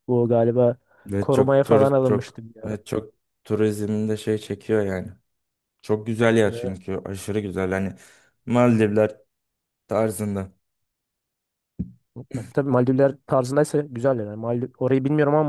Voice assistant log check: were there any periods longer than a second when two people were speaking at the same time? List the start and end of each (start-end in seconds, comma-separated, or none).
1.2-2.8